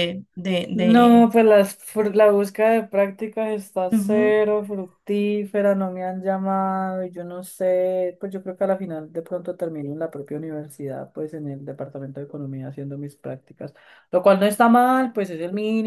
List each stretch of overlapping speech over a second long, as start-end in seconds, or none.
none